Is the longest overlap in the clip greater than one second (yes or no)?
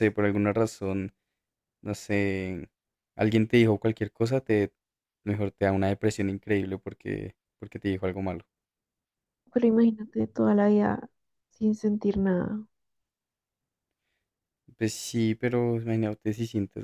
no